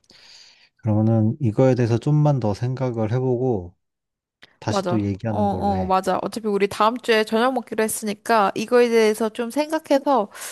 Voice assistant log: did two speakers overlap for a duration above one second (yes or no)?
yes